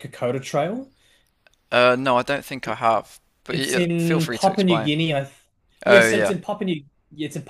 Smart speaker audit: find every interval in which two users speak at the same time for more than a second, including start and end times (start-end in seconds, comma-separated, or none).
3.5-4.9